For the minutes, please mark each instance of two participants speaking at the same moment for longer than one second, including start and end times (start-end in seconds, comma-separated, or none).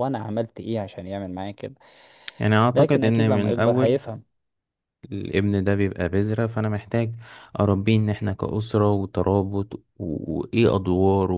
2.7-4.0